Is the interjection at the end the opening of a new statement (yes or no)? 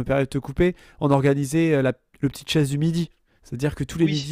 no